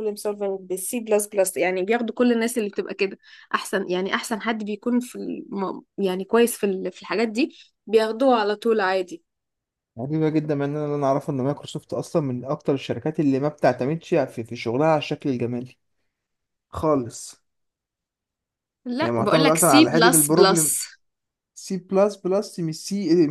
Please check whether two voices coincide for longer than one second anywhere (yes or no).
yes